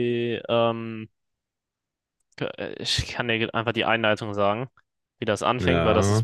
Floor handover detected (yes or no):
no